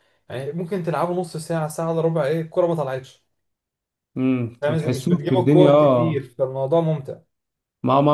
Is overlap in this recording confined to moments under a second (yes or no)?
no